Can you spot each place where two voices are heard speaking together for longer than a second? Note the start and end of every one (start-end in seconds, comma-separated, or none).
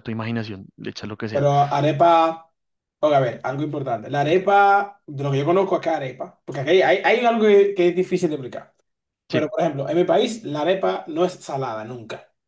none